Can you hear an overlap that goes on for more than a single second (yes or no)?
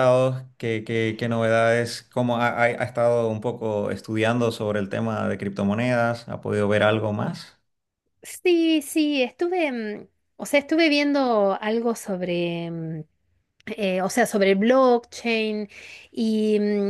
no